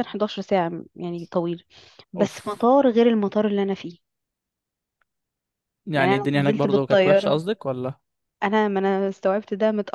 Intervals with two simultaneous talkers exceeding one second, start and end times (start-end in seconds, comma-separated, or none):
6.0-7.4